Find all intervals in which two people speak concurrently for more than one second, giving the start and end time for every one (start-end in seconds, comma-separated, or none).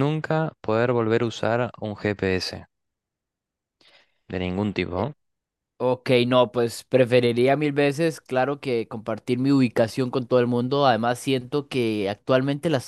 none